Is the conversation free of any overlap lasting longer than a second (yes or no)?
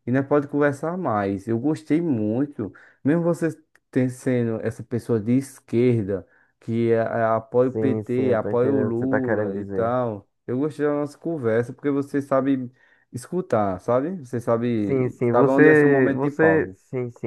no